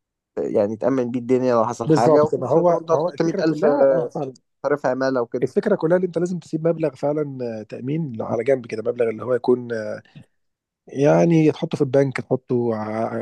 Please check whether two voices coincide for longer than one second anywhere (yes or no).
yes